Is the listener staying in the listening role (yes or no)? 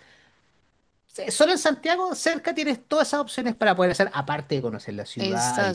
no